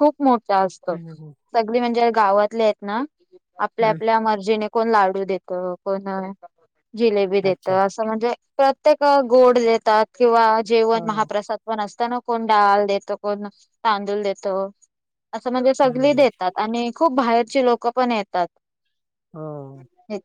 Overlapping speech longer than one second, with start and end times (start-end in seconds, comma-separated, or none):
none